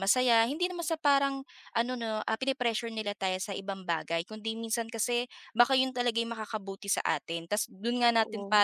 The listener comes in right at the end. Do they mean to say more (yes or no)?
no